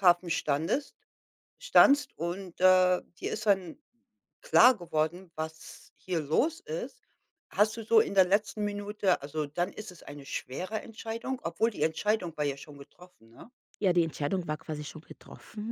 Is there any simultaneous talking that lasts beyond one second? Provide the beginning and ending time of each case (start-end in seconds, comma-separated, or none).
none